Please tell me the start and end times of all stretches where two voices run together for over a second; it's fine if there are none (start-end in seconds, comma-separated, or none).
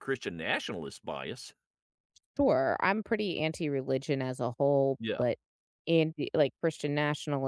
none